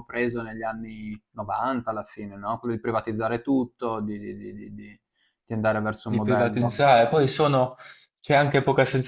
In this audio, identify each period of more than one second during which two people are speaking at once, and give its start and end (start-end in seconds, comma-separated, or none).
none